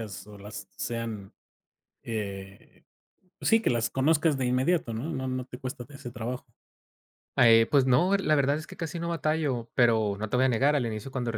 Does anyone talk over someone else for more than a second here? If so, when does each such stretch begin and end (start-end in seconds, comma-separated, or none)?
none